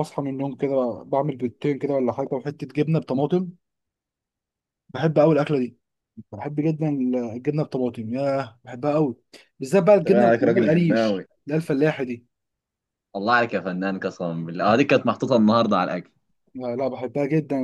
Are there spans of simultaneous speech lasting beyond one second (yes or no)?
yes